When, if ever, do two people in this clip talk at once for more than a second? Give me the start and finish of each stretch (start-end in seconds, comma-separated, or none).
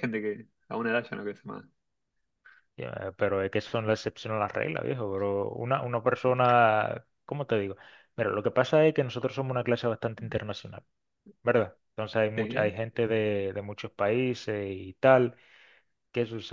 none